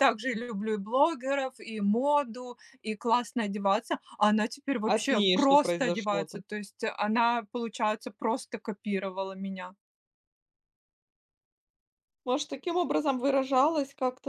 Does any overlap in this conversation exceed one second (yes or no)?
yes